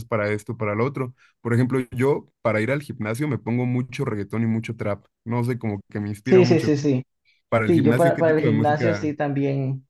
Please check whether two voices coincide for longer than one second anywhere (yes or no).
yes